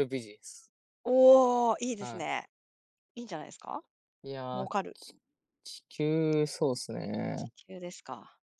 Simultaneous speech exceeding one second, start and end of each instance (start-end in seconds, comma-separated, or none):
none